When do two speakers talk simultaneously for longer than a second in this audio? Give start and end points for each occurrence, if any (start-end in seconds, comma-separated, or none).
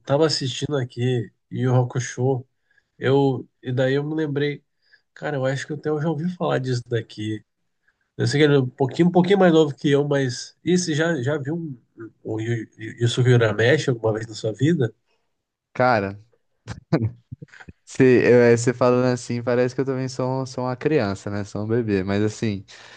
none